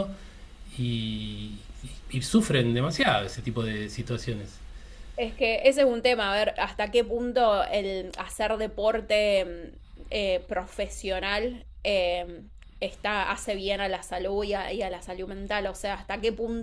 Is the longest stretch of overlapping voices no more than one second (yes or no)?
yes